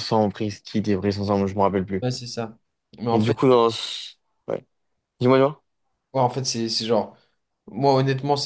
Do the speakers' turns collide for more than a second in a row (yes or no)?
no